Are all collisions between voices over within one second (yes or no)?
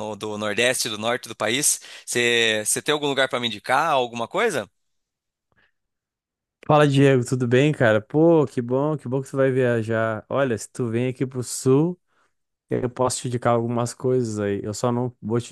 yes